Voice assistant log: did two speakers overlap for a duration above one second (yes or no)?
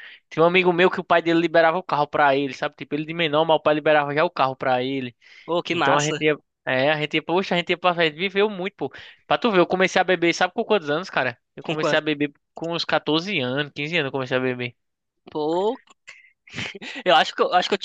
no